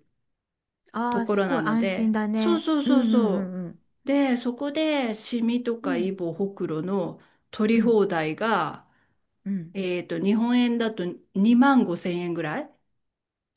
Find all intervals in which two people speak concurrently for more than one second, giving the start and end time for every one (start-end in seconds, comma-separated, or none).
1.1-3.5